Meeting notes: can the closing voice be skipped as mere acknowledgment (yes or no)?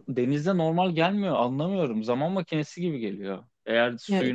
yes